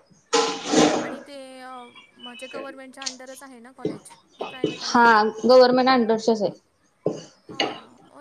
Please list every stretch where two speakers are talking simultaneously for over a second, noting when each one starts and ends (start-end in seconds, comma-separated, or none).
none